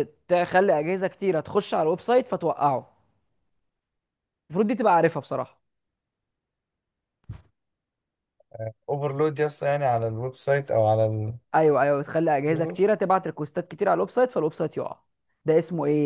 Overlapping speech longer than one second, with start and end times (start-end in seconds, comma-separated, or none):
none